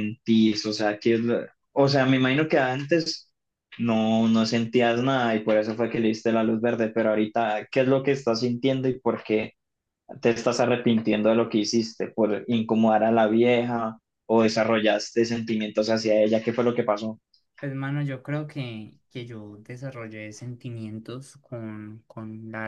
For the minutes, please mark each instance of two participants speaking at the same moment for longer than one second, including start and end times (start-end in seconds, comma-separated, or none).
none